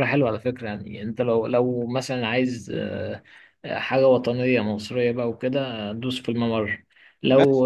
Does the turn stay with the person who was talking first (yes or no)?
no